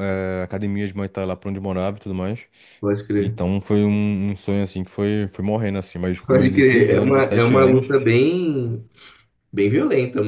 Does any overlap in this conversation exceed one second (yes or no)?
yes